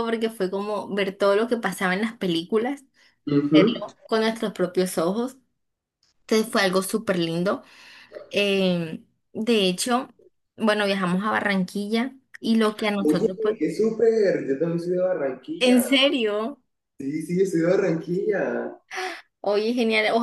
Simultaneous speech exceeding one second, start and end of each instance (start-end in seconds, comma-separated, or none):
none